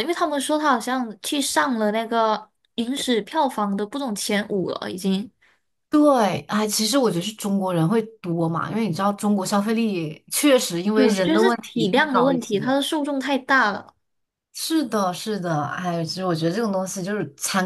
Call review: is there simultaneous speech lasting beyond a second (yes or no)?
yes